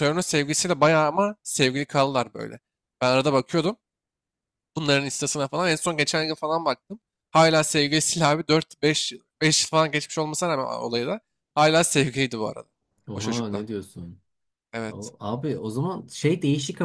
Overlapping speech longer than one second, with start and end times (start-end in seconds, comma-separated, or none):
none